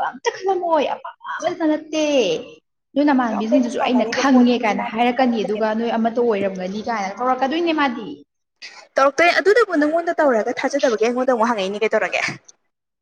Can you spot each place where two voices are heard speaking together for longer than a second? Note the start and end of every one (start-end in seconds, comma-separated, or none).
3.2-5.7